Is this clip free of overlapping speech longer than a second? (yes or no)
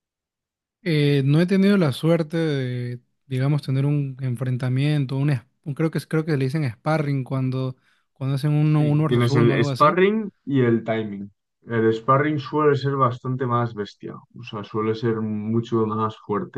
no